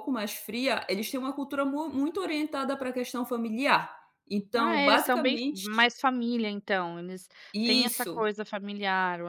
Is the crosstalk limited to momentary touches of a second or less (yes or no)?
no